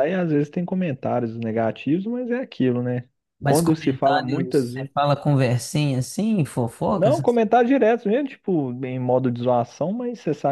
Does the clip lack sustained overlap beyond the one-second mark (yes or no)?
no